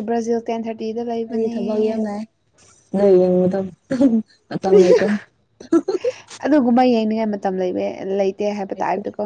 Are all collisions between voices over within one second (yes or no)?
yes